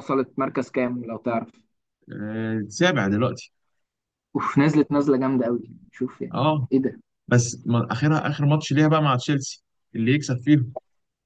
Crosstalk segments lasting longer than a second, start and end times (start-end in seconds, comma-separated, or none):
none